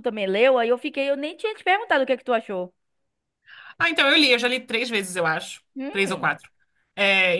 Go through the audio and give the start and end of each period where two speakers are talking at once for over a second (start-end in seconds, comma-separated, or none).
none